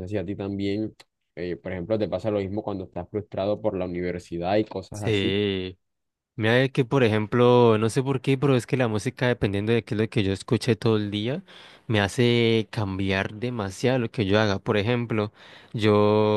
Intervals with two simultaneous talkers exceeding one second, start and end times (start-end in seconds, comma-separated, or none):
none